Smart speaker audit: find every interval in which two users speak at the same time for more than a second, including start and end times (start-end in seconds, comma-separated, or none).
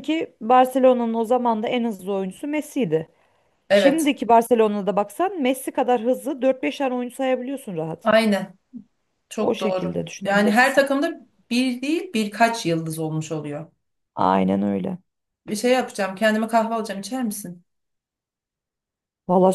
9.4-10.9